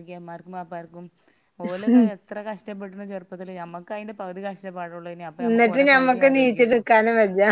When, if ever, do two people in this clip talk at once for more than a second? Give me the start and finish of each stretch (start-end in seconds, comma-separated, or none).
5.5-6.8